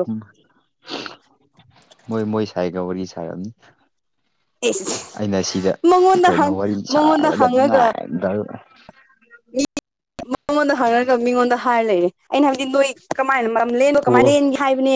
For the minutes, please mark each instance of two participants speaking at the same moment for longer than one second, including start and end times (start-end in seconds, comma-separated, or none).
6.2-7.9